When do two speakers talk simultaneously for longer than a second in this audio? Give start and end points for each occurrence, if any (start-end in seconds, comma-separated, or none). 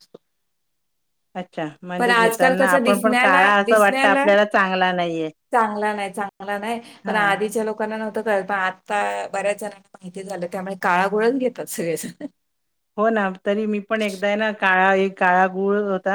2.0-4.2